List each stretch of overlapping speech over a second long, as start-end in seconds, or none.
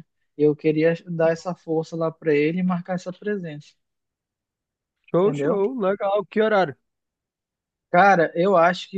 none